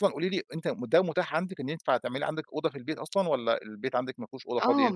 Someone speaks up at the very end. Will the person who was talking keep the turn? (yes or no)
no